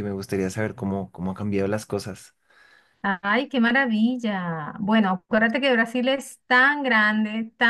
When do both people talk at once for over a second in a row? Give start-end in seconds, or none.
none